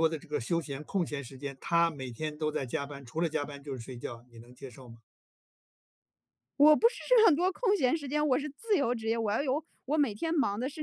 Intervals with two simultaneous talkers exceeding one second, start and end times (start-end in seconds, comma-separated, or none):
none